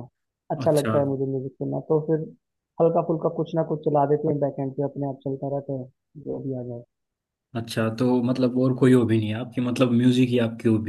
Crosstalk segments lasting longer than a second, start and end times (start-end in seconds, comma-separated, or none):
none